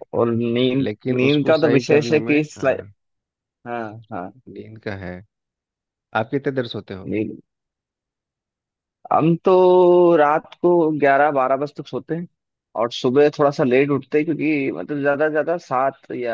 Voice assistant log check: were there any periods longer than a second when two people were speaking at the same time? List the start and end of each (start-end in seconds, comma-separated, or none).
0.8-2.8